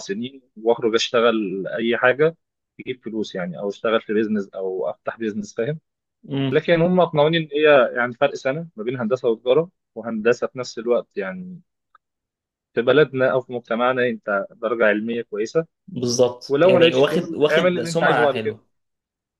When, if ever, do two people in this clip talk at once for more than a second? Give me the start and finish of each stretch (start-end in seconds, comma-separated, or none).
16.5-18.6